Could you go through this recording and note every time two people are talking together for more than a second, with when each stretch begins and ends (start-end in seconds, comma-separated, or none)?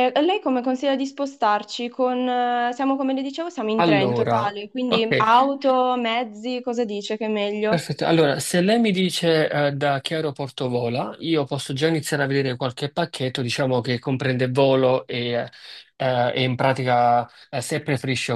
3.8-5.1